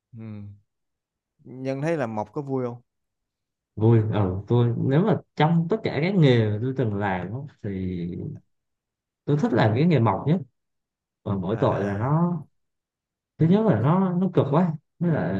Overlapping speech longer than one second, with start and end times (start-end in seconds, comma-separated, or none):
none